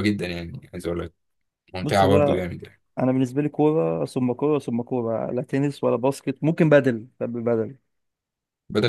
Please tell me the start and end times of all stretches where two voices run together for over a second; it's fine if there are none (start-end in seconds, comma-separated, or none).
none